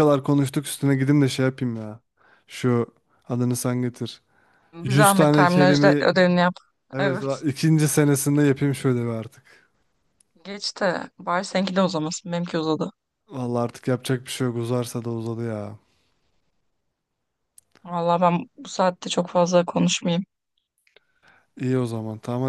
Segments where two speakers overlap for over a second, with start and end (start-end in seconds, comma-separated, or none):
4.8-6.0